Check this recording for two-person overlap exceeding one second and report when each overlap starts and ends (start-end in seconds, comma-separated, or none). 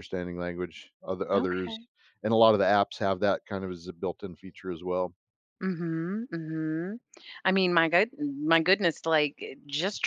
none